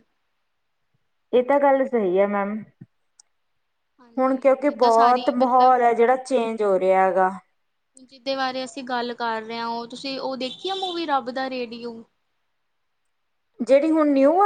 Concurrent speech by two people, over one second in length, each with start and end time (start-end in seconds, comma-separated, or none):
4.2-5.8